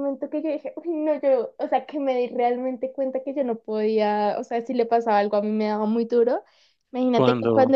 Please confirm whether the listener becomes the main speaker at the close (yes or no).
no